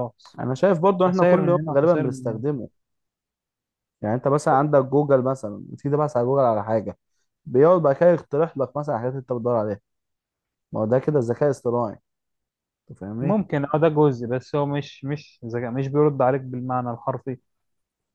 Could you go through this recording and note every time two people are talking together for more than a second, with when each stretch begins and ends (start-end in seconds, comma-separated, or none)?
1.1-2.4